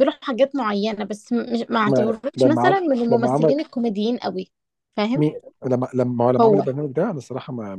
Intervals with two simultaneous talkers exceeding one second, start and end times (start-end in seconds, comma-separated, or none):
1.9-3.5